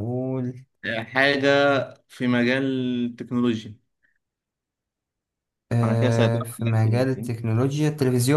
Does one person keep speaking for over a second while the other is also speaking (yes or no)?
yes